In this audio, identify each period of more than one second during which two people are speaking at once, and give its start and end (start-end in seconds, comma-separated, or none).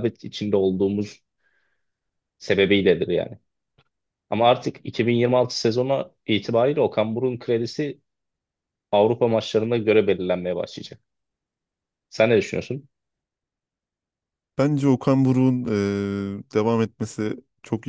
none